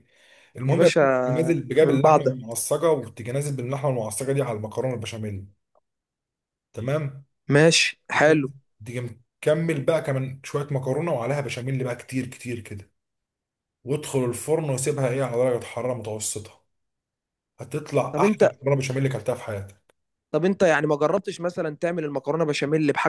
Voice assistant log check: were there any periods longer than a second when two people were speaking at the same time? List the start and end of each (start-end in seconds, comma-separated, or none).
none